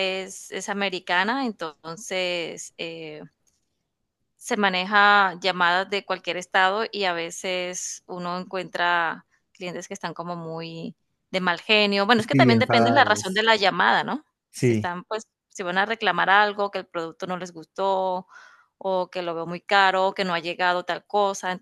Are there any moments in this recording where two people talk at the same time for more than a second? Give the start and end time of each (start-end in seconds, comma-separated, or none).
12.2-13.4